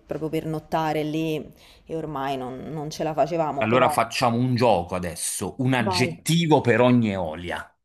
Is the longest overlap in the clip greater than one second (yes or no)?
no